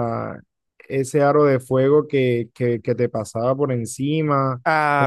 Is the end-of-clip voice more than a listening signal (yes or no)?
no